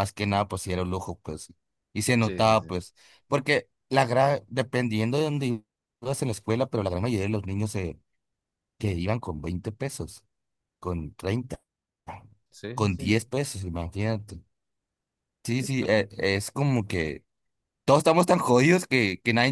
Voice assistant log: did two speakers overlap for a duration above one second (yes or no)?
no